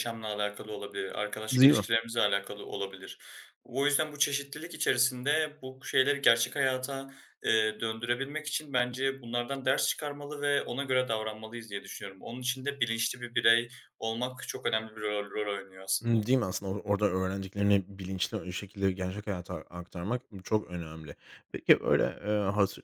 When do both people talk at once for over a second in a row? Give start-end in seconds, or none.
none